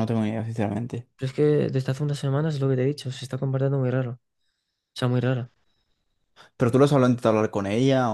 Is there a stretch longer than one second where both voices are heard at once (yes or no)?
no